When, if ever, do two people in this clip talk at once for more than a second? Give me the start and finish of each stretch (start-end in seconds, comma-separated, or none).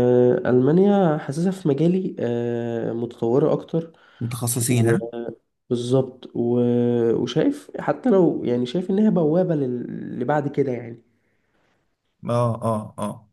none